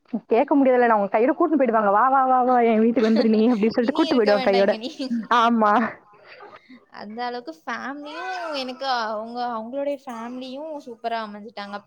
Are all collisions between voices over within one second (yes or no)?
yes